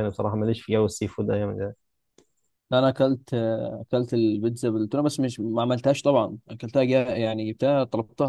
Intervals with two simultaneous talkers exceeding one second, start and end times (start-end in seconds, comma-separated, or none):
none